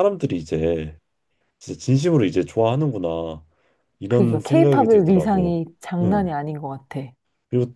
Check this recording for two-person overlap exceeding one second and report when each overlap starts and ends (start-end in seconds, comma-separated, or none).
4.1-5.6